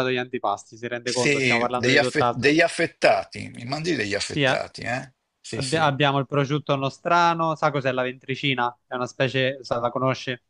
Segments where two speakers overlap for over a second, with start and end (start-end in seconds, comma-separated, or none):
1.0-2.5